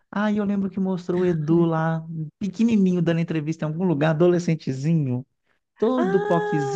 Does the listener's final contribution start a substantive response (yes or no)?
yes